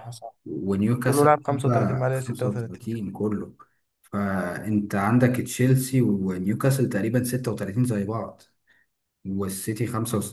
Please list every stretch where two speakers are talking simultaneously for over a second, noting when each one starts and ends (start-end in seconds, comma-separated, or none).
1.0-2.9